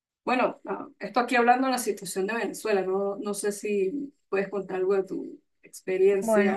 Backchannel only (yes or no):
no